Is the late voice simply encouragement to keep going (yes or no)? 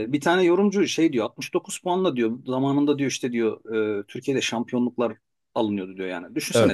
yes